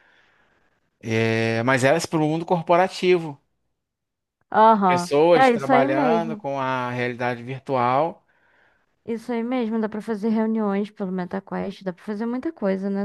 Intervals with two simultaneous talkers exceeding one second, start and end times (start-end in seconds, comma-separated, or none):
4.8-6.5